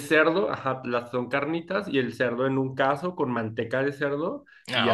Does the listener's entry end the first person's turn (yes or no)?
no